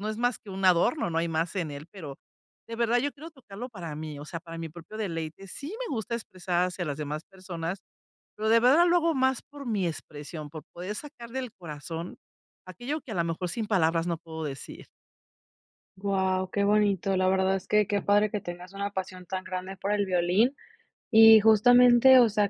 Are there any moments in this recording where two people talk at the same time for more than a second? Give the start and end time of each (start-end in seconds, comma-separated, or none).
none